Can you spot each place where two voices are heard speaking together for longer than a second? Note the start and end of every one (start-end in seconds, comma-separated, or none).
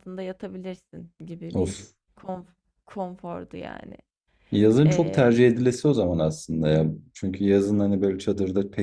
none